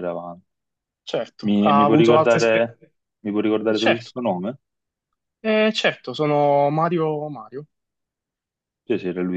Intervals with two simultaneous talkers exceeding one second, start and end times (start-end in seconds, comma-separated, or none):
1.4-2.7